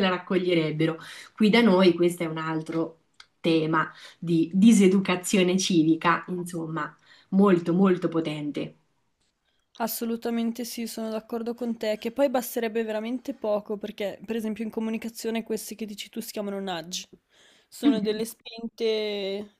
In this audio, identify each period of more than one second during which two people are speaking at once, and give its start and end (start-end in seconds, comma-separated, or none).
none